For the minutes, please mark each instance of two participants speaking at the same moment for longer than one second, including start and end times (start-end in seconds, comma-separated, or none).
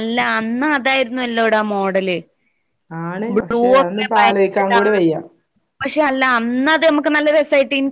3.3-5.1